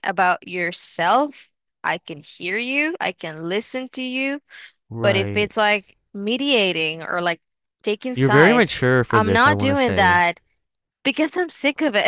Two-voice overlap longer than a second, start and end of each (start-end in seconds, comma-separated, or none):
8.1-10.2